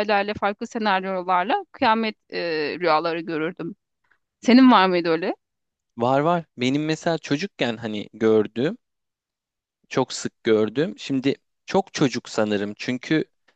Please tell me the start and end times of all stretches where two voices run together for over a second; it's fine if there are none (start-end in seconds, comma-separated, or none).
none